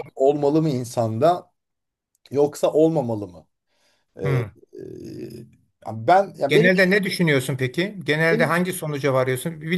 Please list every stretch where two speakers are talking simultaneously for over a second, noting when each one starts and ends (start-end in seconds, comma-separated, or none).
none